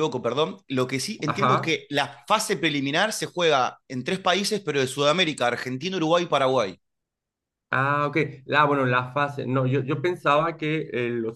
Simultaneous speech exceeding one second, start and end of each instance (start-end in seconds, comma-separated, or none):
none